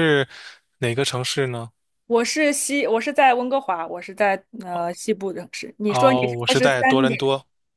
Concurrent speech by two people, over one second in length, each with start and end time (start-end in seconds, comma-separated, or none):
5.9-7.2